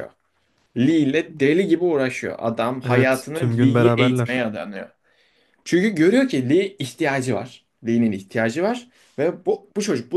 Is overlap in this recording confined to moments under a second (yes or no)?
no